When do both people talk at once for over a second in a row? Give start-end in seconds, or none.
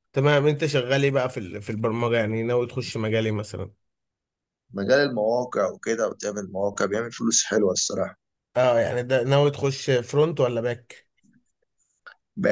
none